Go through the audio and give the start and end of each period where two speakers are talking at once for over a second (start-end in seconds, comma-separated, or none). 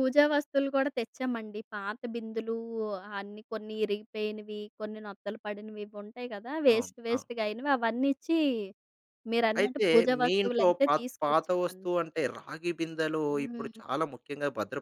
9.6-11.8